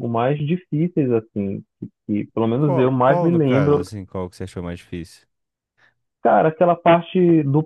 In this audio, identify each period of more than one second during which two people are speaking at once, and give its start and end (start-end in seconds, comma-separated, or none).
2.6-3.9